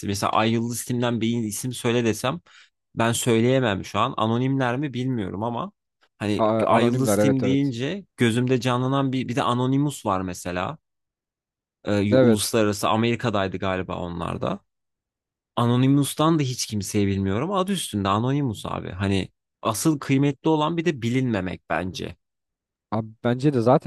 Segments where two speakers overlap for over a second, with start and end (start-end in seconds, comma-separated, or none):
6.4-7.7